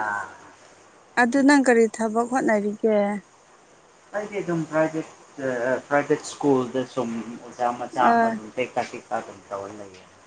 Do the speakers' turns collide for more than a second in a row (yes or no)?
no